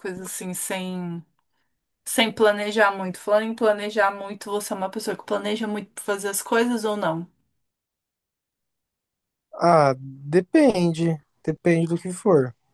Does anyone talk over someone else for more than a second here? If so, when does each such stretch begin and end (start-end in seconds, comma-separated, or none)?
none